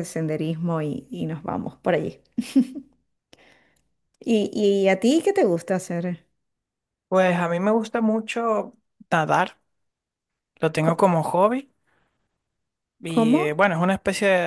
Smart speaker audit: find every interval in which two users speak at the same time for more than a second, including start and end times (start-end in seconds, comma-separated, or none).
none